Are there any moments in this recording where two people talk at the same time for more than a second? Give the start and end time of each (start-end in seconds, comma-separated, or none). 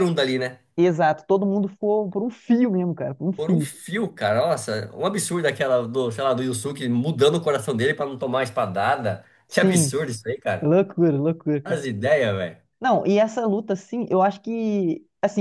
none